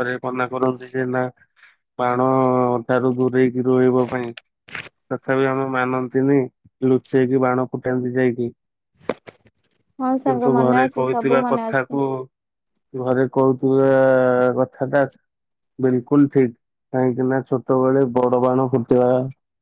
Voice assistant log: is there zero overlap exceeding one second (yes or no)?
no